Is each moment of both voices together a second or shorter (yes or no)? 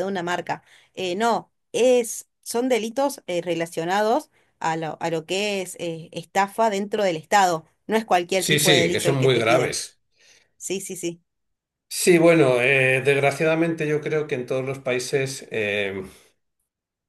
no